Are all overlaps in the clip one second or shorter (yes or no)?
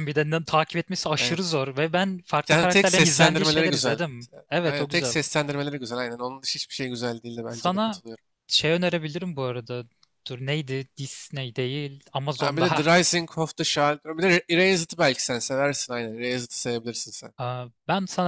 no